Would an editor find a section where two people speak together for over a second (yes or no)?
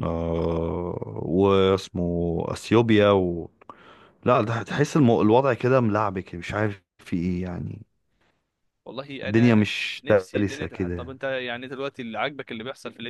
yes